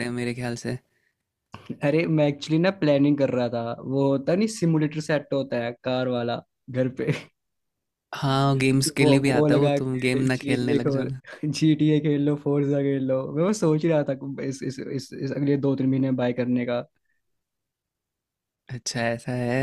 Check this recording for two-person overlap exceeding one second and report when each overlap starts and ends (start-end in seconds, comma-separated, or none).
9.0-11.1